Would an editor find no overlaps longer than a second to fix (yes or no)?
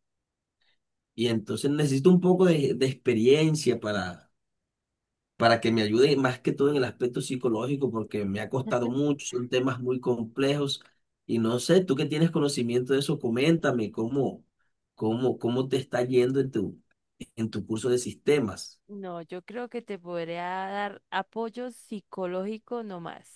yes